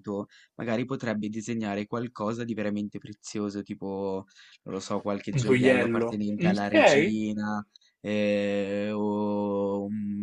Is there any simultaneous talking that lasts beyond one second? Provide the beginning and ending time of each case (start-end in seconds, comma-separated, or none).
5.3-7.2